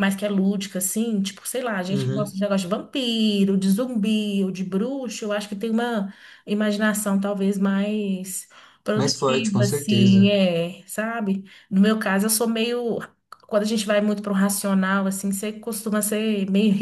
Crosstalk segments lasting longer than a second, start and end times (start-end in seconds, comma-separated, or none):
9.0-10.3